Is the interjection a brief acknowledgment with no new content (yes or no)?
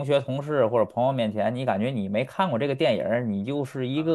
no